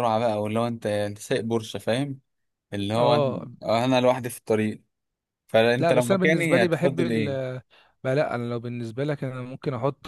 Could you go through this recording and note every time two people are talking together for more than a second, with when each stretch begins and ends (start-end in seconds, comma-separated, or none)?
5.8-7.2